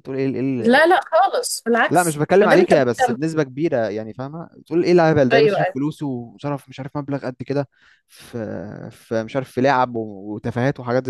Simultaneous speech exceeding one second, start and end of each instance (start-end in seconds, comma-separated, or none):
1.9-3.2